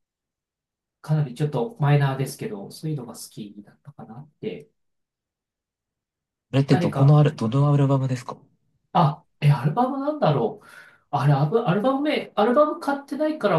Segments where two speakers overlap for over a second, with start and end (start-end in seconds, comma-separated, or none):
none